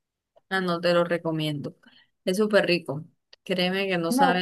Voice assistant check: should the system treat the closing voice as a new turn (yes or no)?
no